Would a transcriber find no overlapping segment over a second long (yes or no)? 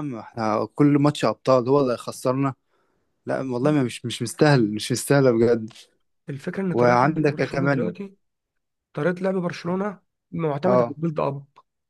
no